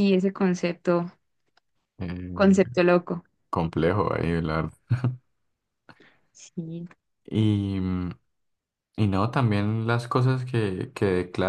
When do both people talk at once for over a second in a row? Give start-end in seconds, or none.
none